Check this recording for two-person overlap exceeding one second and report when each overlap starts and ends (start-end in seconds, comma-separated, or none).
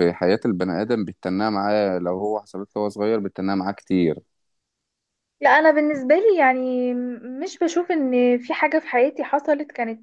none